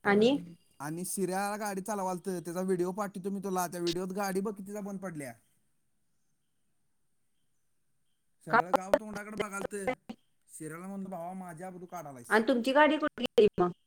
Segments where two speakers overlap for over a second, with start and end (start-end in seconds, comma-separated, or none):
none